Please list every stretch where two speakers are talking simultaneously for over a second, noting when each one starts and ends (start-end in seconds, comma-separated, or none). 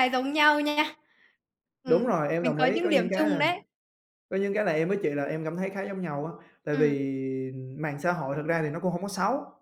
1.9-3.4